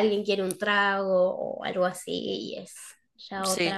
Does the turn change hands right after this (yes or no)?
yes